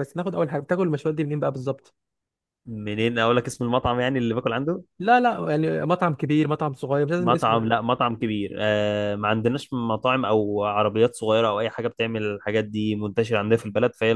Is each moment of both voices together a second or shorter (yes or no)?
yes